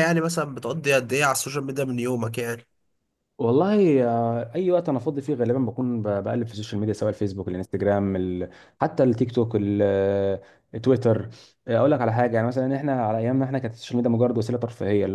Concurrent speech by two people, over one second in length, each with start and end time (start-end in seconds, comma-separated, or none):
none